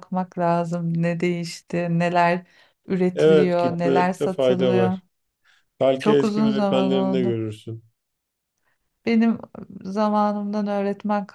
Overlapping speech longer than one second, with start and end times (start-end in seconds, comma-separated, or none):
3.1-5.0, 6.0-7.4